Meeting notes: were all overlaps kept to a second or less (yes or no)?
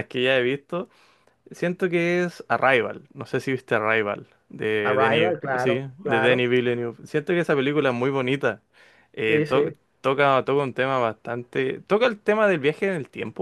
no